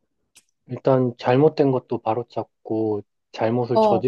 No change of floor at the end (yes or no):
yes